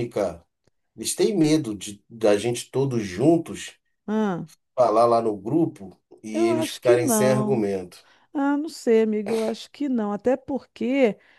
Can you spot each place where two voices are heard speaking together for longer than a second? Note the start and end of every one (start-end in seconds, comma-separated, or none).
6.3-7.7